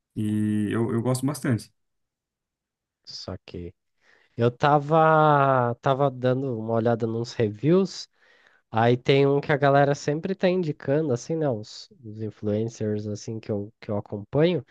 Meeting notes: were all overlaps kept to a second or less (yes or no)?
yes